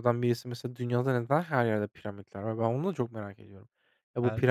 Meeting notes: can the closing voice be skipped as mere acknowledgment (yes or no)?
yes